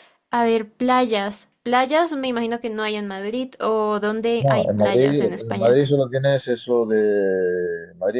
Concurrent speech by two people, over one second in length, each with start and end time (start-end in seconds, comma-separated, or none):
4.4-5.8